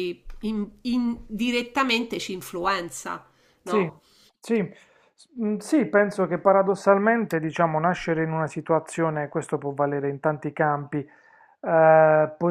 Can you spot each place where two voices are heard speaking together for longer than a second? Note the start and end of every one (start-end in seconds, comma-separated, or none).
none